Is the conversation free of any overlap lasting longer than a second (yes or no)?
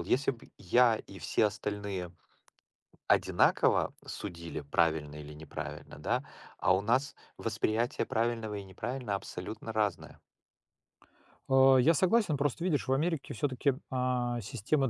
yes